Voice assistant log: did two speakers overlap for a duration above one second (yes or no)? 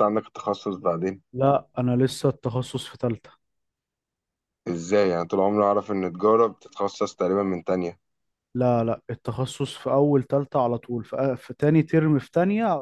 no